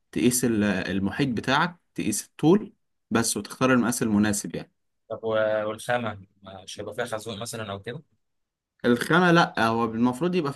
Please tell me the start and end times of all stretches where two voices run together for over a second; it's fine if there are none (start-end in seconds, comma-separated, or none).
none